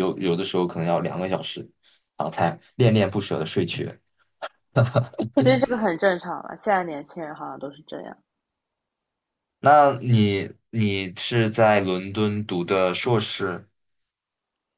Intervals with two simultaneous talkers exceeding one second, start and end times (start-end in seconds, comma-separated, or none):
none